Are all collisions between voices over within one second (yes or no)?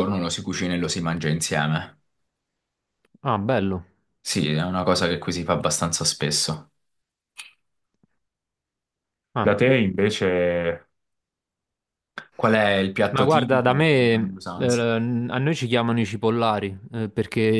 no